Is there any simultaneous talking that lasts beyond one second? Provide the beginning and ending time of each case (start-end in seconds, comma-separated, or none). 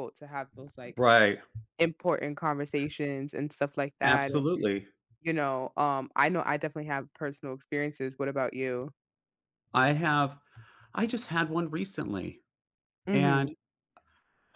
none